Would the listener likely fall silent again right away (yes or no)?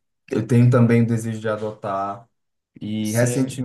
yes